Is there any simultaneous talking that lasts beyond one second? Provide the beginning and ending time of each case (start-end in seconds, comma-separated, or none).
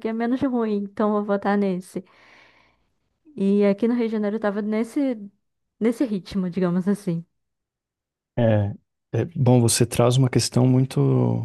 none